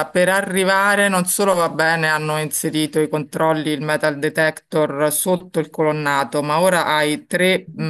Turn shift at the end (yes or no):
no